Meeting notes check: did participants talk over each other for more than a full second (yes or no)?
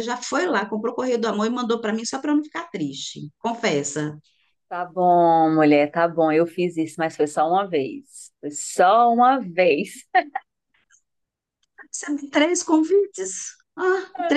no